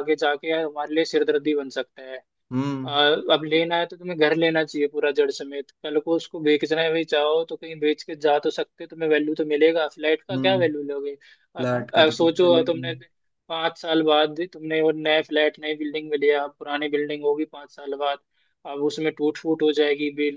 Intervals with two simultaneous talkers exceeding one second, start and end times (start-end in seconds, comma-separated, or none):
11.6-12.9